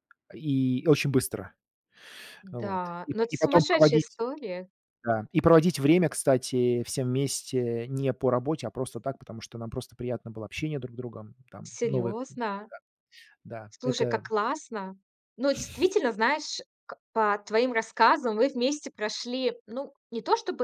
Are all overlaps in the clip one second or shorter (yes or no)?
no